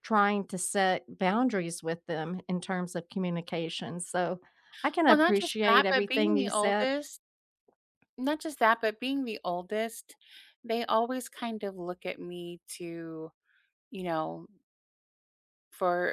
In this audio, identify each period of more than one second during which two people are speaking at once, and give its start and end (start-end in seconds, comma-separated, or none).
5.1-6.9